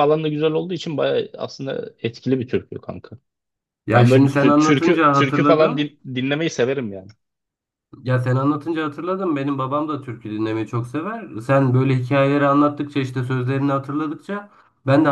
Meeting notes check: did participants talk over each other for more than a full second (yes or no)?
yes